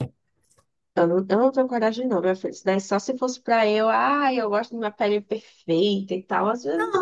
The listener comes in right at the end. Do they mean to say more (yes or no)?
yes